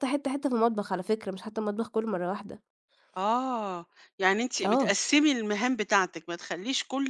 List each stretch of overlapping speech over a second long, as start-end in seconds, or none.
none